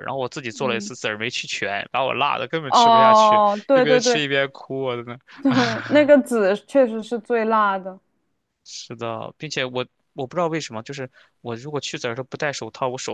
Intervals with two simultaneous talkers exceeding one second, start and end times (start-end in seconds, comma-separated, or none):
2.7-4.2